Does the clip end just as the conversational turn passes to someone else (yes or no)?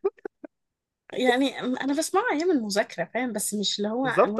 yes